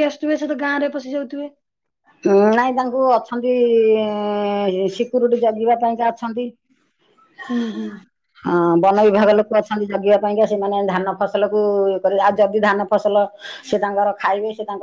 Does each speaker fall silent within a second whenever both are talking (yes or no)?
yes